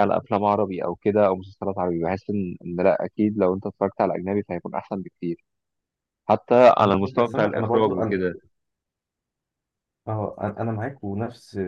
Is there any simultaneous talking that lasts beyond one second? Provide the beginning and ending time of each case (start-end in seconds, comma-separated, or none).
6.8-8.2